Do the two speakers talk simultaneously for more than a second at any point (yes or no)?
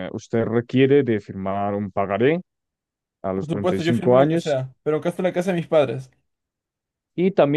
yes